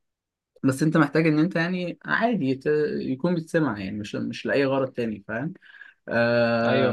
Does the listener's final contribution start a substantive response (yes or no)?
yes